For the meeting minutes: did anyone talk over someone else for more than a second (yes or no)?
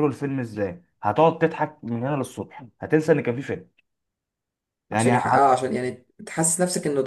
no